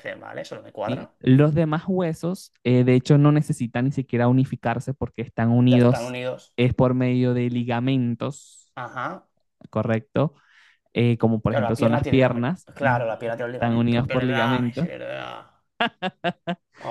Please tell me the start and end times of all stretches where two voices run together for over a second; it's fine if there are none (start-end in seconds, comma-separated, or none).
11.5-14.9